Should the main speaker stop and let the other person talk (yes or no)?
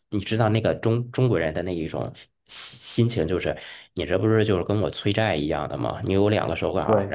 no